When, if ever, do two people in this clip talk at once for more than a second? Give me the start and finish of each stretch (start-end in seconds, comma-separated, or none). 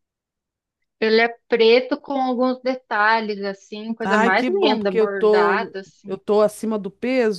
4.0-6.1